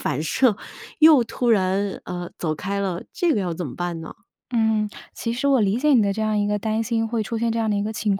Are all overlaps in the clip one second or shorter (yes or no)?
yes